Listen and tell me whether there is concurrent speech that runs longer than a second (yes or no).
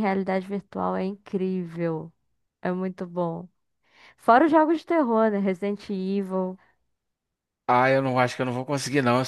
no